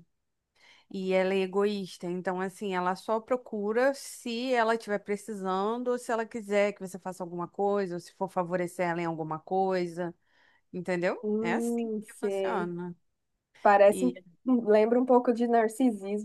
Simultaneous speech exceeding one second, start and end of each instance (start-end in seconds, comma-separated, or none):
11.2-12.7